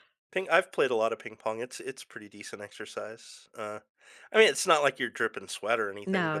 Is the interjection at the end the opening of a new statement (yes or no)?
no